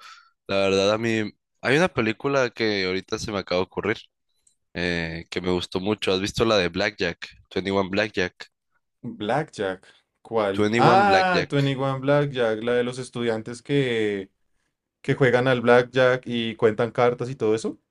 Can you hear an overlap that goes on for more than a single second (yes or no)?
yes